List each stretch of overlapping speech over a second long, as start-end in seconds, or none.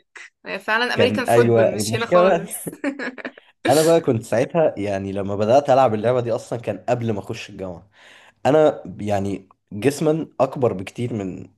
0.9-2.4